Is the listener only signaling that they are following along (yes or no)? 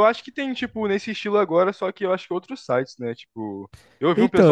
no